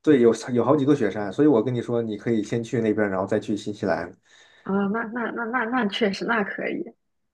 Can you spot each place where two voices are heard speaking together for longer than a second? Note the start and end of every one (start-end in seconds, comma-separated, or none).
none